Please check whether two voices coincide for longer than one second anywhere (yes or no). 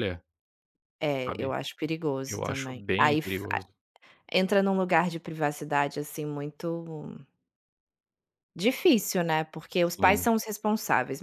yes